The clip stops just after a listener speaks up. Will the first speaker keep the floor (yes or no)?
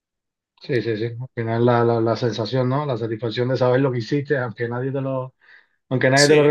yes